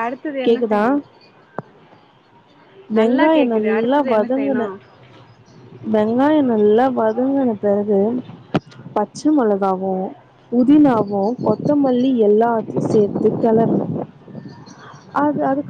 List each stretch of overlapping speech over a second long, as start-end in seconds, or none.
3.0-4.7